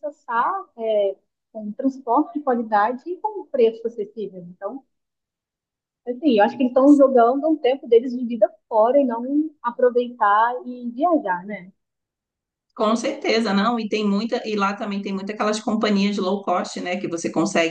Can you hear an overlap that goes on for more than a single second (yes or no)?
no